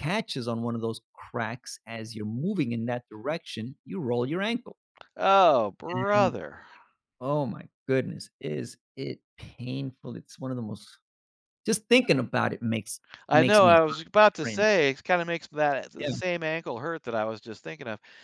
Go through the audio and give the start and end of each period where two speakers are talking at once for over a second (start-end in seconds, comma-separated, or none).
13.3-14.7